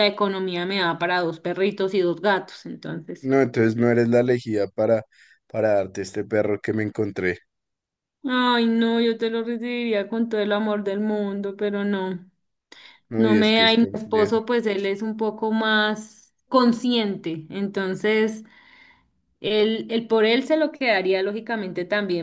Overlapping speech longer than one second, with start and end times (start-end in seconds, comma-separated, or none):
13.2-14.4